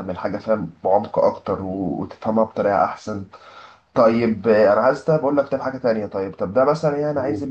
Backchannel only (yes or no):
yes